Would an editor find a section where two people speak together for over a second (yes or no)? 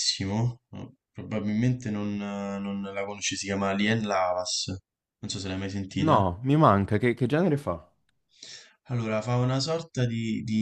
no